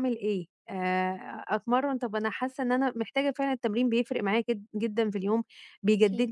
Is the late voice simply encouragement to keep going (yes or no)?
yes